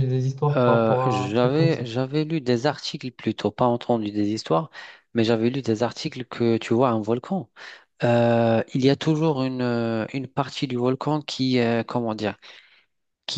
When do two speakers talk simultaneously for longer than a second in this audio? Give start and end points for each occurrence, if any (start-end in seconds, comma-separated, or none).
0.6-1.8